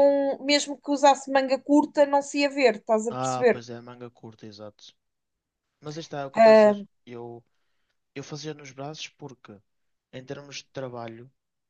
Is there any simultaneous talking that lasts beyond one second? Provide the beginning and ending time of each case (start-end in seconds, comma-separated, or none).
none